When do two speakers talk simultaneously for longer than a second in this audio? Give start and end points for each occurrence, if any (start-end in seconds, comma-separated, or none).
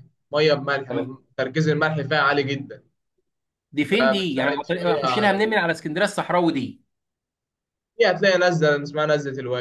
3.9-5.6